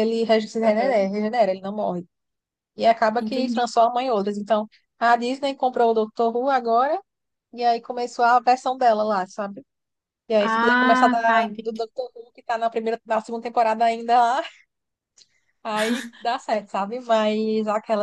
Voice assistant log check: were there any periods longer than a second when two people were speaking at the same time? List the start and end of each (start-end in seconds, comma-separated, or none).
10.4-11.8